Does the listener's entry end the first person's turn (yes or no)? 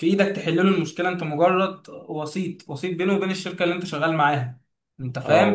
yes